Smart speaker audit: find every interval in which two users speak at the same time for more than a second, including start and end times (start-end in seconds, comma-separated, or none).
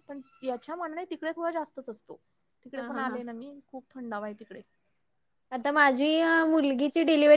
none